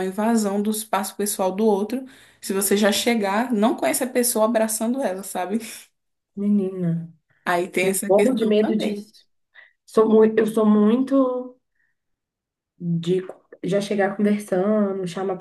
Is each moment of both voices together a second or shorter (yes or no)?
no